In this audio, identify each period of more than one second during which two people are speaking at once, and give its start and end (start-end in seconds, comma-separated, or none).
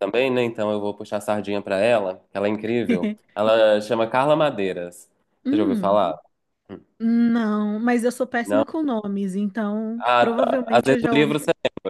10.0-11.4